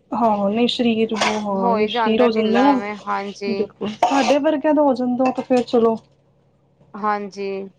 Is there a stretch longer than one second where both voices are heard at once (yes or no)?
no